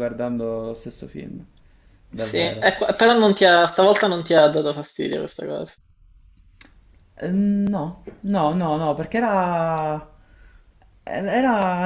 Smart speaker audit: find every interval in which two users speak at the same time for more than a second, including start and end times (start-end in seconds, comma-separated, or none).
none